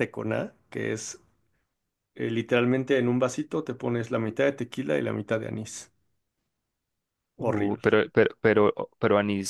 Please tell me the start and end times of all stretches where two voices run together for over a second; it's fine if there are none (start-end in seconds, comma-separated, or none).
none